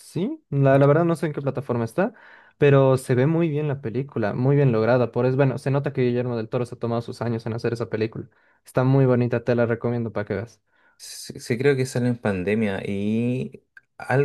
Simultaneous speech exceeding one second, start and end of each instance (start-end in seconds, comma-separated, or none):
none